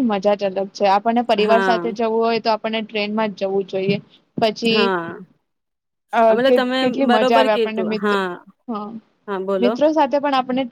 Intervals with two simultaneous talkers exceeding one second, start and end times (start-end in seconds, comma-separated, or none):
6.3-8.0